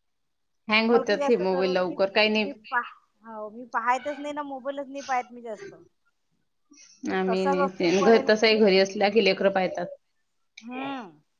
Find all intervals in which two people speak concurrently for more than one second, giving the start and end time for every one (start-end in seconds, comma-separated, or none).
0.9-2.3